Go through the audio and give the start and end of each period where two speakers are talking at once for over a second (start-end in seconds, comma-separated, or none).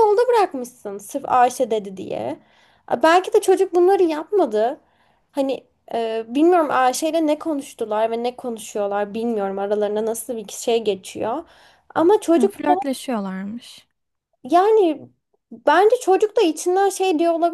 none